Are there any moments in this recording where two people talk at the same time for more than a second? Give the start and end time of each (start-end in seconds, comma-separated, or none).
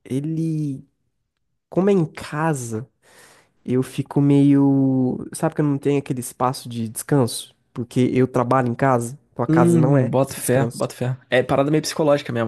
9.5-10.9